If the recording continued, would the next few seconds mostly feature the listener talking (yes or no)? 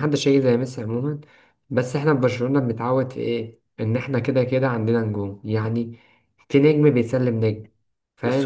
yes